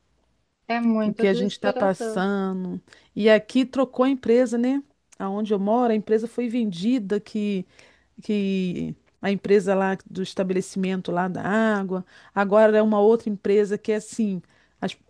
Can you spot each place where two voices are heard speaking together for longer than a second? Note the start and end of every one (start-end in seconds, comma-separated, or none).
1.0-2.2